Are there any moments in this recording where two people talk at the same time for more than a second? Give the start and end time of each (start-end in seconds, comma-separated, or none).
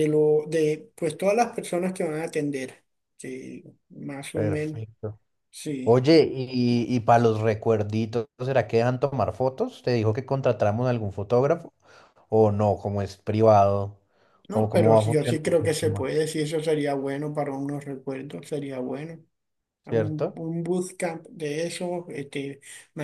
14.5-16.1